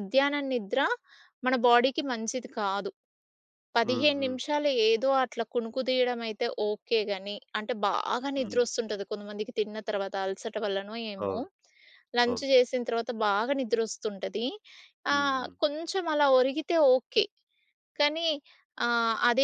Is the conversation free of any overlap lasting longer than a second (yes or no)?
yes